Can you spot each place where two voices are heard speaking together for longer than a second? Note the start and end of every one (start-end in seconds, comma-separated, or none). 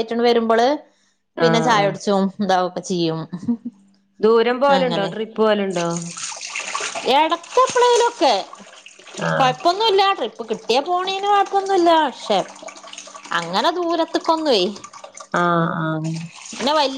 none